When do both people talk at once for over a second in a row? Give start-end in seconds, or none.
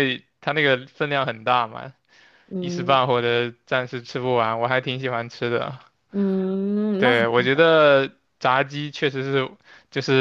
none